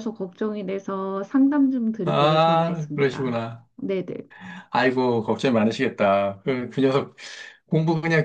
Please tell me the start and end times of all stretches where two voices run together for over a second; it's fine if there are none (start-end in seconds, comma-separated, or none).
2.0-3.7